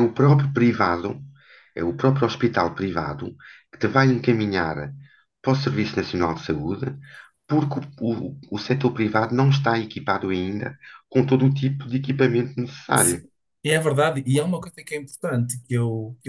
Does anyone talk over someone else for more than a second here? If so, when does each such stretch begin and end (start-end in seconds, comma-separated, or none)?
none